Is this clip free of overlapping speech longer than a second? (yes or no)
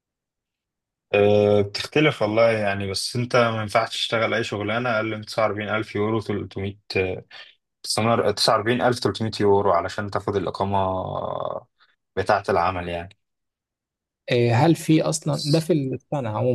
yes